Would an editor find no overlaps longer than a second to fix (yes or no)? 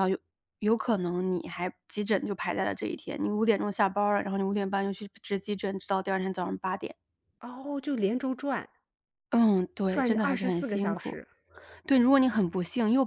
no